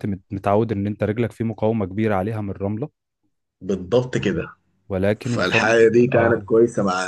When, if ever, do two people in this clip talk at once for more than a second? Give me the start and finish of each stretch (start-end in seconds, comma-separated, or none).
5.2-6.5